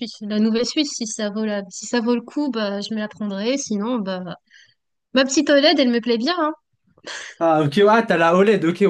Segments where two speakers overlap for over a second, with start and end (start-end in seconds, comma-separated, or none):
none